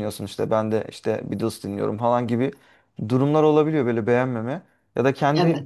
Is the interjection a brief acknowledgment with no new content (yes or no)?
yes